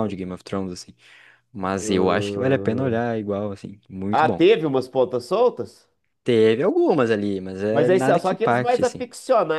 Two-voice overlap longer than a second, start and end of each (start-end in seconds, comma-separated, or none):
1.8-3.0, 7.7-9.1